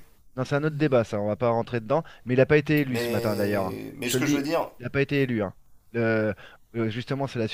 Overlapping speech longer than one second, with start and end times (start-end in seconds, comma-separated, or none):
2.9-4.7